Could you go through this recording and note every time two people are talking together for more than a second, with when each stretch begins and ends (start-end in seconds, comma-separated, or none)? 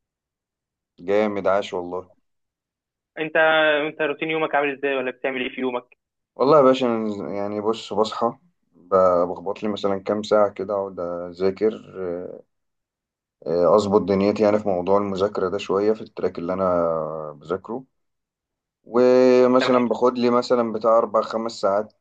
none